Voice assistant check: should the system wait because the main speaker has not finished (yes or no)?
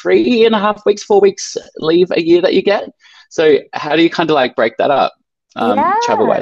no